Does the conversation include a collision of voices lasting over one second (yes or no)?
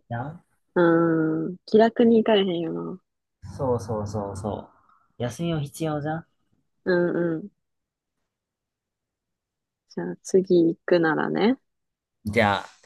no